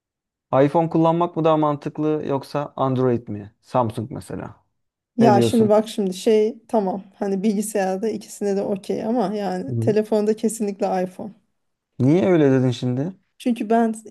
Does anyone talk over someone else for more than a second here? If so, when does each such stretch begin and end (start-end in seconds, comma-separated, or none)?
none